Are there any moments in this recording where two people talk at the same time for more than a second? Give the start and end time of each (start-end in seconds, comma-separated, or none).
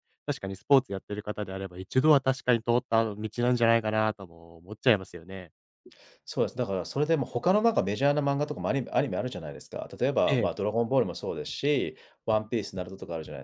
none